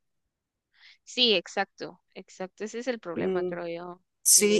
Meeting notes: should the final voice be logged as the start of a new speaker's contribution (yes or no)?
yes